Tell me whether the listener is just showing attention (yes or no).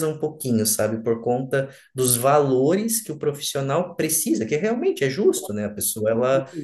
yes